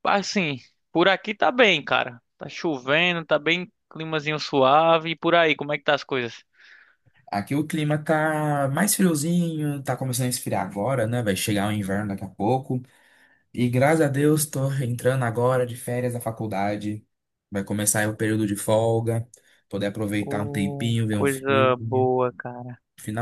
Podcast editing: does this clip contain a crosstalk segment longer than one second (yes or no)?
yes